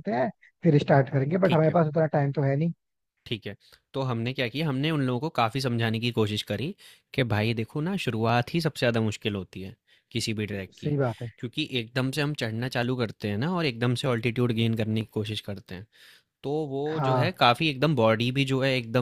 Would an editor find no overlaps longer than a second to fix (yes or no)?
yes